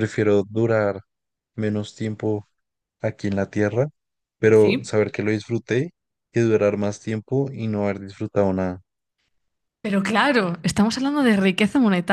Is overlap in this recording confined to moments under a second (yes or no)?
yes